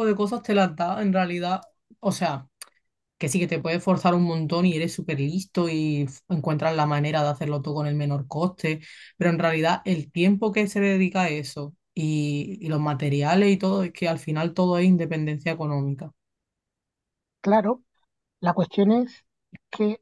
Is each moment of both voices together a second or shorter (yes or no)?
yes